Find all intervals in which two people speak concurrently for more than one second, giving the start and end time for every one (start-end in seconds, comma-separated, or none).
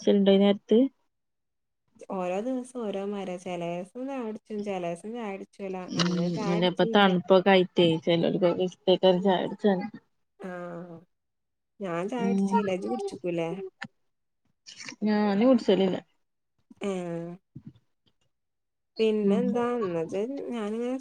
none